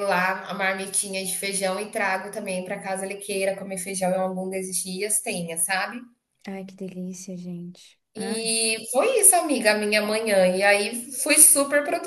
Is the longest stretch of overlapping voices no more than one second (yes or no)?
yes